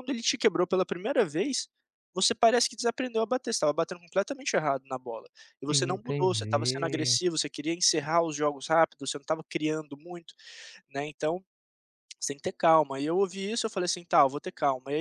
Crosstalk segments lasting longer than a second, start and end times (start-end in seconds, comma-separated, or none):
5.7-7.2